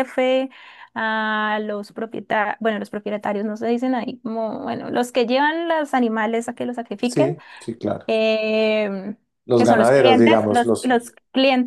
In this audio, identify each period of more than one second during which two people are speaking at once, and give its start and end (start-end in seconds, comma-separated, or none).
9.5-10.9